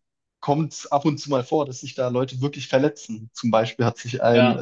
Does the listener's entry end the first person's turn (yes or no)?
no